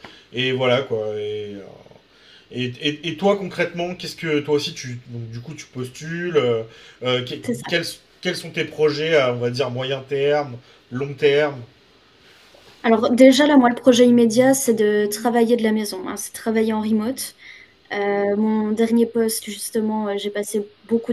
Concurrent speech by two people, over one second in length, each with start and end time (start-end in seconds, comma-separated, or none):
none